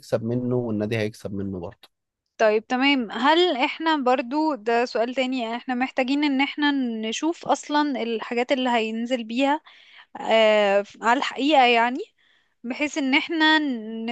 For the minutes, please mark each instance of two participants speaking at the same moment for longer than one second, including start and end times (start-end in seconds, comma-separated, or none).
none